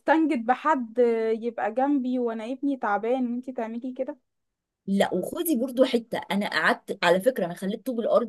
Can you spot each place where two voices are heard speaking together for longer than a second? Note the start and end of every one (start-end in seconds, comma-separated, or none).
none